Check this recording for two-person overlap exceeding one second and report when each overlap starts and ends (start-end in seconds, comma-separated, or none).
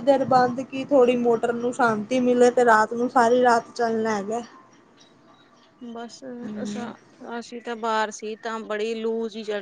none